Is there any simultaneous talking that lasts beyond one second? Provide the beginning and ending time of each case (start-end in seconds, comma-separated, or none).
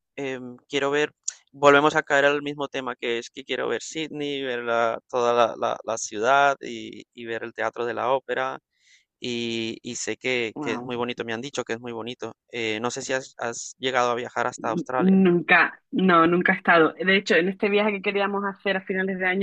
none